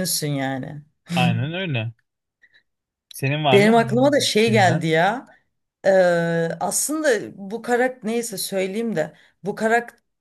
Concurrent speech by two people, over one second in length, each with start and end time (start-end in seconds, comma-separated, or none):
3.5-4.8